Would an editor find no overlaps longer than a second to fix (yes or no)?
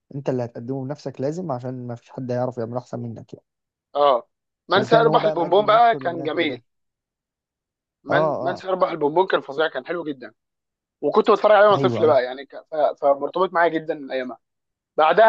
no